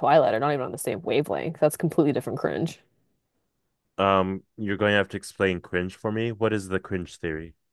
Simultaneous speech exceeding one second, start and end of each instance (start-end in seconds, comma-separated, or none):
none